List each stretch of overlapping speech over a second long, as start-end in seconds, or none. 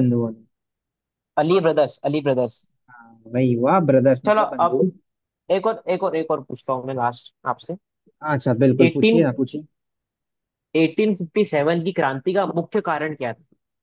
none